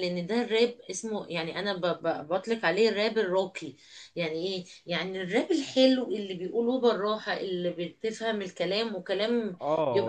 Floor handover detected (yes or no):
yes